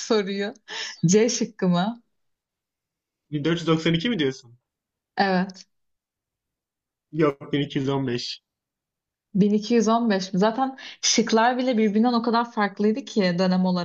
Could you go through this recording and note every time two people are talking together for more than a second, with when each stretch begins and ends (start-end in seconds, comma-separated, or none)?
none